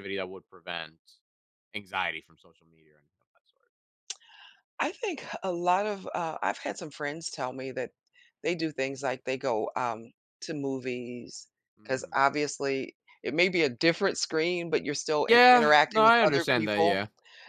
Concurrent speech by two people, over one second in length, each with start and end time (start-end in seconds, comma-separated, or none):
15.3-17.0